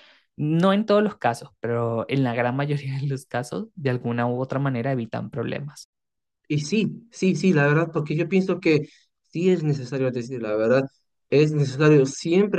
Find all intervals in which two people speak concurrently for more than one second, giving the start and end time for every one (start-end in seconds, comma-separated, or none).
none